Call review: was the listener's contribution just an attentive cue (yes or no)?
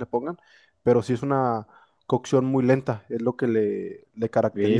no